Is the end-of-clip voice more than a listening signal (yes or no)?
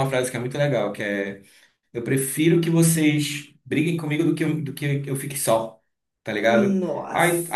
no